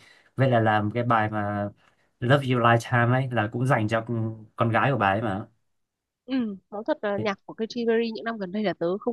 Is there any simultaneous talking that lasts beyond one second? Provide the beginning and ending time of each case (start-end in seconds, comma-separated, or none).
none